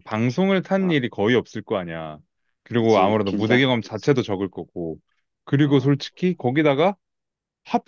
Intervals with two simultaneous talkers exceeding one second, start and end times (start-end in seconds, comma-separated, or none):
2.8-4.2